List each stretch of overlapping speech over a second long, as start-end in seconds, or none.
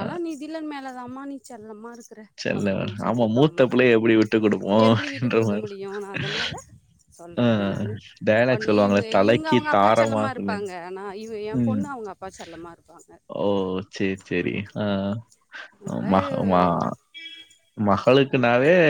8.5-10.6